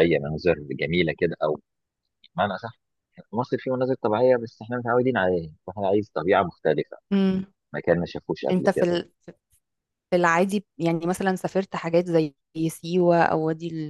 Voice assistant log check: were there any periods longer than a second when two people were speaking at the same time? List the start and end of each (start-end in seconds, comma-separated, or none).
none